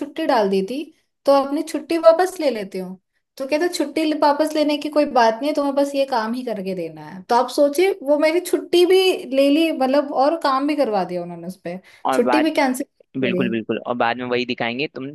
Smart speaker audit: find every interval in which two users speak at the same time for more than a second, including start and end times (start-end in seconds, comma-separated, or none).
none